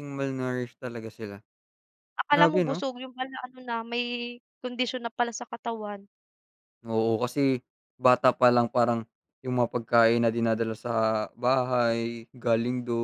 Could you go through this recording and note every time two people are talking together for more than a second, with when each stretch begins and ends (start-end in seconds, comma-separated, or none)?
none